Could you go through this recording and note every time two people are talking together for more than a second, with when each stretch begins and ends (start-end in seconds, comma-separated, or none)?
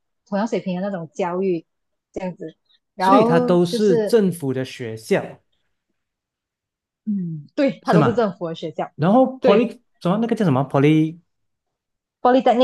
3.0-4.2